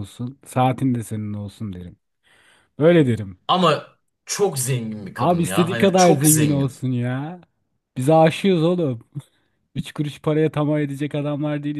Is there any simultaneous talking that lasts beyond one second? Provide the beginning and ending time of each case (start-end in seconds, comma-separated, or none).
5.2-6.8